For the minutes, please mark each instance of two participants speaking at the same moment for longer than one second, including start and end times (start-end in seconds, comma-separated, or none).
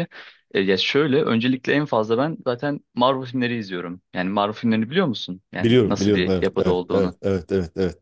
5.6-7.1